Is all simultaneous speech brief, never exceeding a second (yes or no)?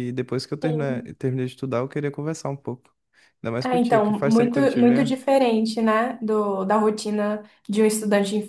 no